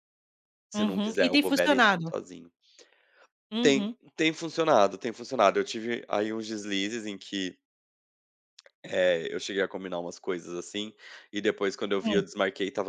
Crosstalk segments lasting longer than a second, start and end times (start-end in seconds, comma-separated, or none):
0.7-2.1